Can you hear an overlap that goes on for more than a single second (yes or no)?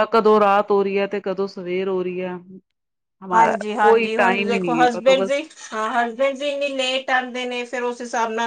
yes